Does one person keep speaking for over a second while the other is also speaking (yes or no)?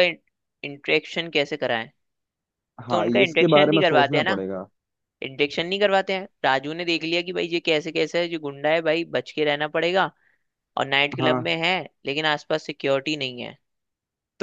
yes